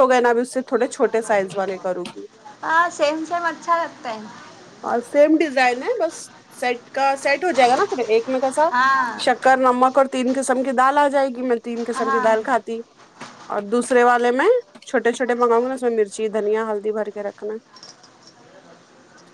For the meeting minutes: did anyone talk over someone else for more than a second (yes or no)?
no